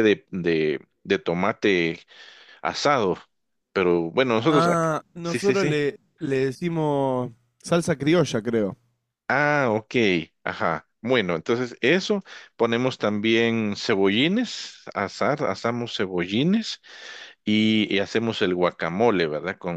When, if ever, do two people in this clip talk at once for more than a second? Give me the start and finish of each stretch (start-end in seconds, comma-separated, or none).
4.5-5.8